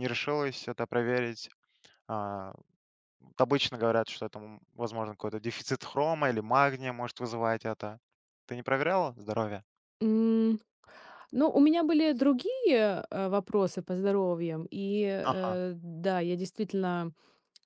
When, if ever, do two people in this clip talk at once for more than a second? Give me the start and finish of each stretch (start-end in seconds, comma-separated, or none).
none